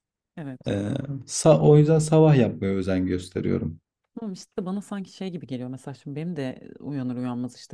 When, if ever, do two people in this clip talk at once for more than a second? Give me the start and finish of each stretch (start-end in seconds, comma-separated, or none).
none